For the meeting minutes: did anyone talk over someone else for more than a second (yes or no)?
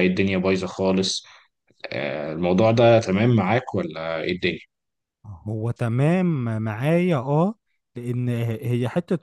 no